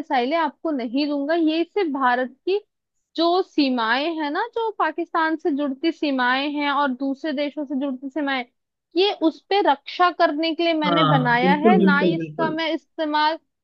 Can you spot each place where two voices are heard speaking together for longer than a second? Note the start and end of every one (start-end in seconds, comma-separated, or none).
10.8-12.6